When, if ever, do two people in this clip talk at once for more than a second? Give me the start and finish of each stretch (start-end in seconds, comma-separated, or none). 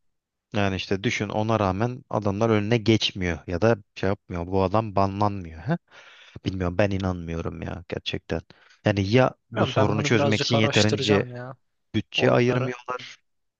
9.5-11.2